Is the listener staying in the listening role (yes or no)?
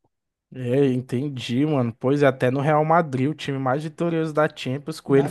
no